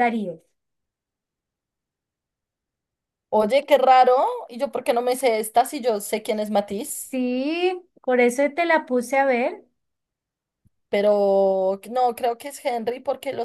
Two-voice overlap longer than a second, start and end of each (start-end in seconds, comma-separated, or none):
none